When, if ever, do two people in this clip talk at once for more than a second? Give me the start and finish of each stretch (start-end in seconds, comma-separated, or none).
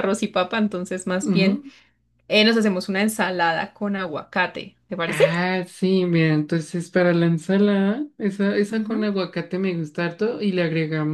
none